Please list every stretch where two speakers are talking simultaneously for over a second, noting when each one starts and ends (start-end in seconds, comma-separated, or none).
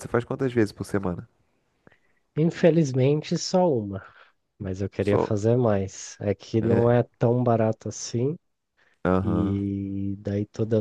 none